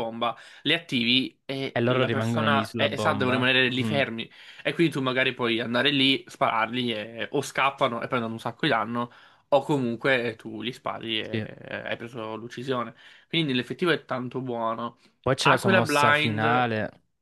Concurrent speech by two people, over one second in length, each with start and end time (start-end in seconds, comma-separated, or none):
1.7-4.0, 15.4-16.7